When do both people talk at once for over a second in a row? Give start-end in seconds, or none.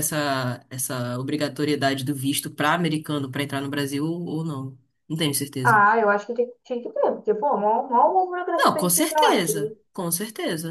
8.6-9.8